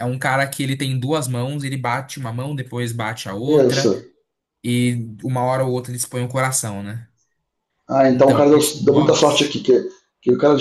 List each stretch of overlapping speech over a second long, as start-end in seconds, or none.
8.1-9.6